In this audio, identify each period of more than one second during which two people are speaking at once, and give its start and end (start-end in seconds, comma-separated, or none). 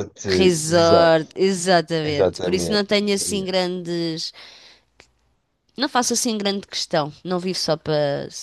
2.0-3.5